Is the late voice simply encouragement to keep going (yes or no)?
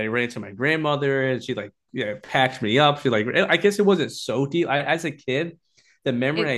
yes